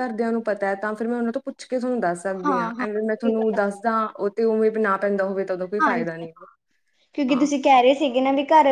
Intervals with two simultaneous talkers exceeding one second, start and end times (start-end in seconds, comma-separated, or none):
2.4-3.9